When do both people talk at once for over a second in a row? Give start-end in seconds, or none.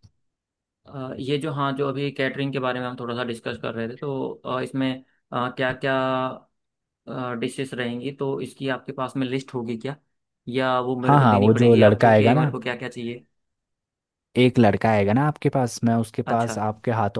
11.0-12.5